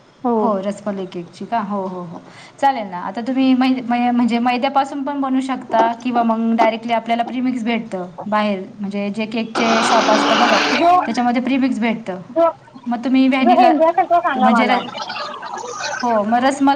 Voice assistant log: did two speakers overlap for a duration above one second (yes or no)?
no